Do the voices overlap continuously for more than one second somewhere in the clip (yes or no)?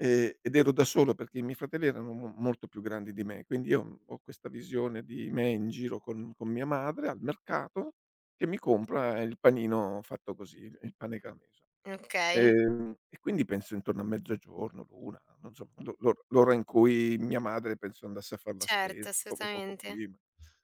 yes